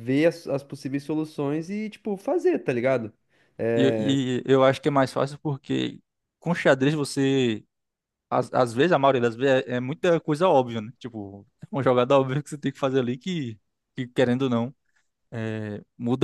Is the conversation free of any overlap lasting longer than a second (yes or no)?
yes